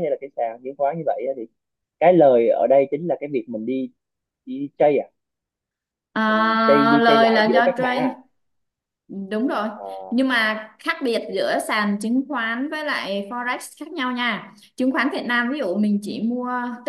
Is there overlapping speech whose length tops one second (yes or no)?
yes